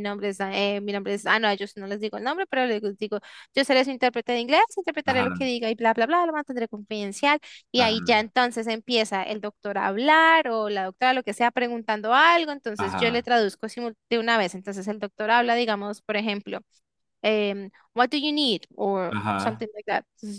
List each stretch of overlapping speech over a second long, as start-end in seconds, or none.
none